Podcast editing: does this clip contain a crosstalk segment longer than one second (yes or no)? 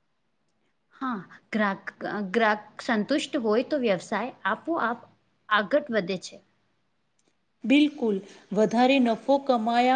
no